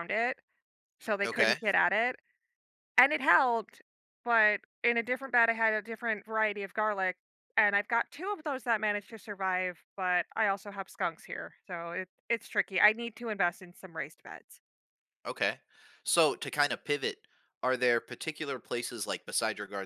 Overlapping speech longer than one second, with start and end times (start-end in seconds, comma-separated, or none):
none